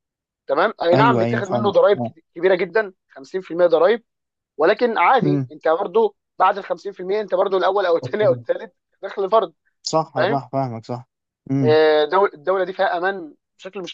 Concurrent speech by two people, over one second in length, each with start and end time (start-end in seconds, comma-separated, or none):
0.9-2.1